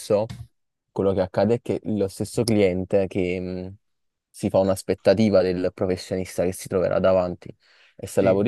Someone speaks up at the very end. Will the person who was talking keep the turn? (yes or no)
yes